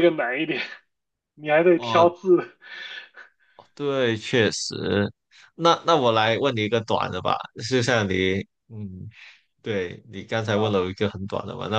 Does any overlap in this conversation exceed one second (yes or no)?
no